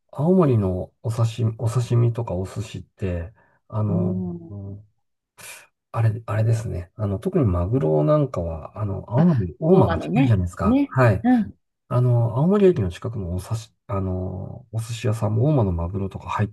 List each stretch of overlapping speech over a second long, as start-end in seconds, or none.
9.2-11.2